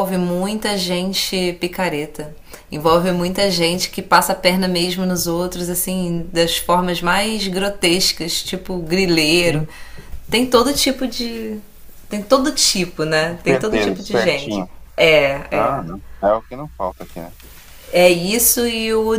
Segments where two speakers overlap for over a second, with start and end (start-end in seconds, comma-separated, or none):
13.2-14.7